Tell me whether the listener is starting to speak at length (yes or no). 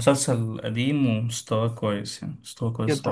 no